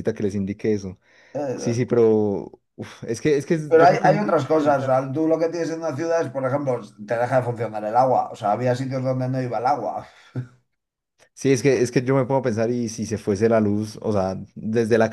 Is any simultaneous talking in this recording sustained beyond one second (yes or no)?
yes